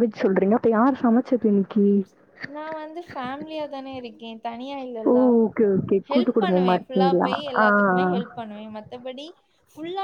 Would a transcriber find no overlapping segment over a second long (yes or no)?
no